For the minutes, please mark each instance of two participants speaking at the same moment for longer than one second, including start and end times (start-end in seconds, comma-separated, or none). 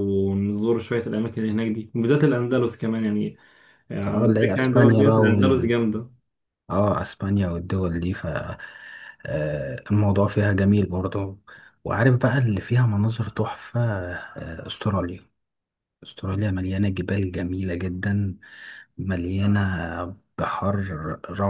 4.1-5.7